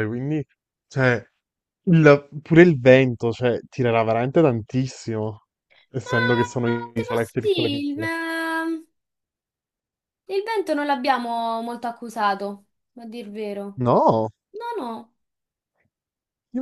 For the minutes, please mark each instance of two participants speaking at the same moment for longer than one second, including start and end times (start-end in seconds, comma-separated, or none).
6.0-8.1